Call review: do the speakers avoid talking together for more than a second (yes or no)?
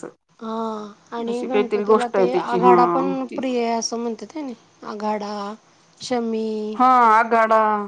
no